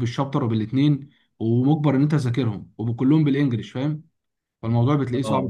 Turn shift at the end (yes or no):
no